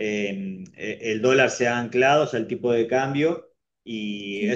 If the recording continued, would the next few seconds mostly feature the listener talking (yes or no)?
no